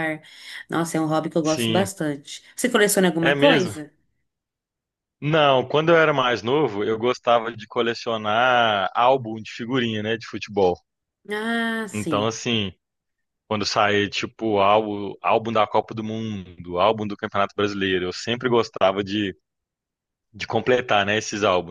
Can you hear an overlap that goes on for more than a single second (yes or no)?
no